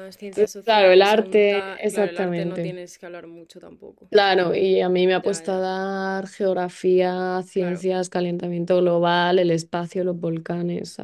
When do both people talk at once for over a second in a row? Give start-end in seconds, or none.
0.6-2.8